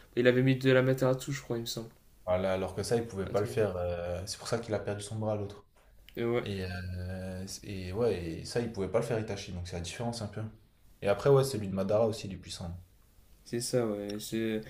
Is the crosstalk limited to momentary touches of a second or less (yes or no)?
yes